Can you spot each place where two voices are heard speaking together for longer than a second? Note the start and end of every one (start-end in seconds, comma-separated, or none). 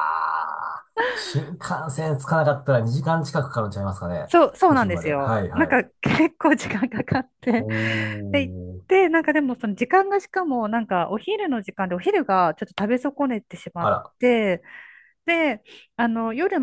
4.2-5.8